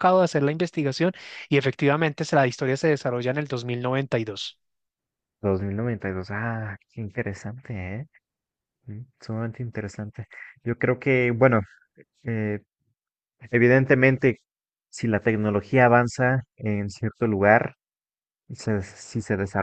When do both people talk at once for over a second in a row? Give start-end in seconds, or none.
none